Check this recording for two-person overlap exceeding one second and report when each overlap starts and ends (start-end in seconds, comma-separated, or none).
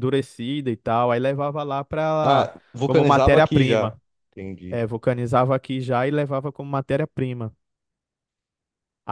2.2-4.0